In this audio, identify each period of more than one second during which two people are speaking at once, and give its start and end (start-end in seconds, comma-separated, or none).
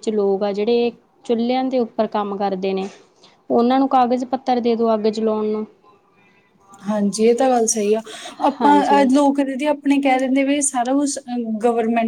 none